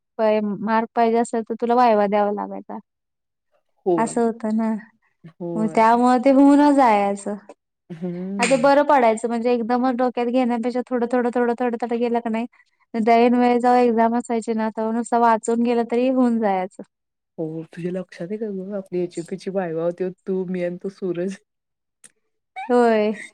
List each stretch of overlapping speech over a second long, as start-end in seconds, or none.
none